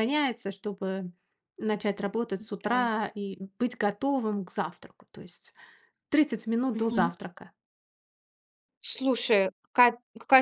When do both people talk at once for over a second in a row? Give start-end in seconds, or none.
none